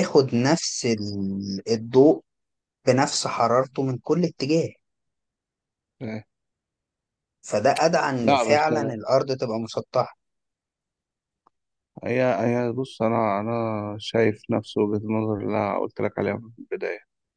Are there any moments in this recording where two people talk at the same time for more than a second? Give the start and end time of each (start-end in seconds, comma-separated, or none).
none